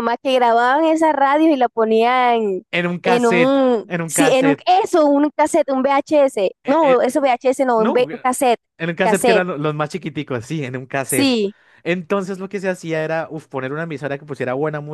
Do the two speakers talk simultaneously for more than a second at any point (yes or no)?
yes